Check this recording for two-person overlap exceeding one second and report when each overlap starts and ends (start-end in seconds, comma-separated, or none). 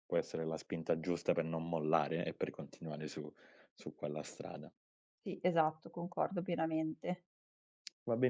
none